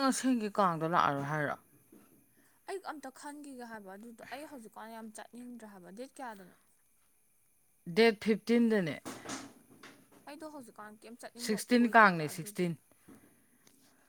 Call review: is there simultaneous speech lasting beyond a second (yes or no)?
yes